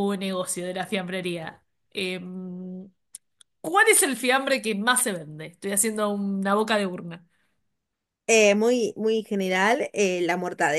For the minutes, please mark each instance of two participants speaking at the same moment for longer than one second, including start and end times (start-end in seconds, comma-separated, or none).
none